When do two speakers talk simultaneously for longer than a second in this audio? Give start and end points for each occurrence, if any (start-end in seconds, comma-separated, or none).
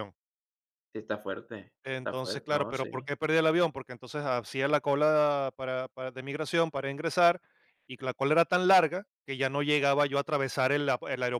1.9-3.1